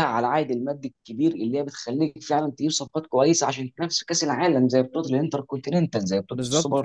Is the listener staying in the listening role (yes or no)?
yes